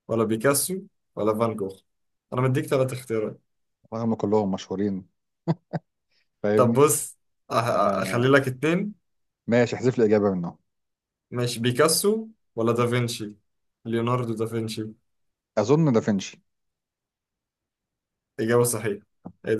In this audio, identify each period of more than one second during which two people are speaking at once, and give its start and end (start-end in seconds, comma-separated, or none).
none